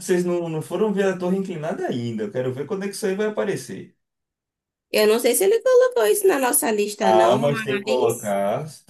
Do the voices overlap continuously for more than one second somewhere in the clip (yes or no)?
yes